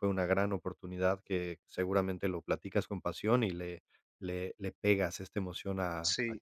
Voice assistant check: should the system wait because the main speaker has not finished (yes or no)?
no